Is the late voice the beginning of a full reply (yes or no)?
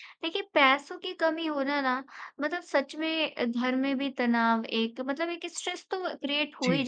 no